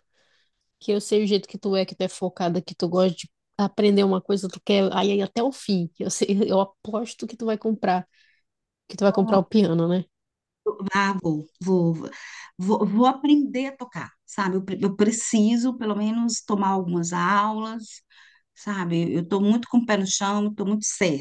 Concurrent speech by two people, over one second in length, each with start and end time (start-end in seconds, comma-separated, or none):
none